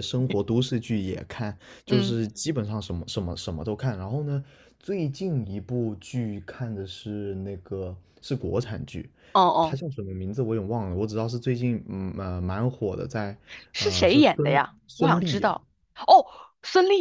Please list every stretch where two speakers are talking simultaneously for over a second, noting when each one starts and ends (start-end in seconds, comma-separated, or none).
13.8-15.5